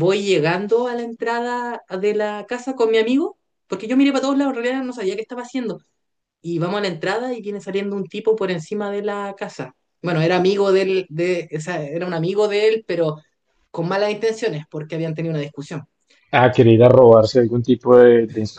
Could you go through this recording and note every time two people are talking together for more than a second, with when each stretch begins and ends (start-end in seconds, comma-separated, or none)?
none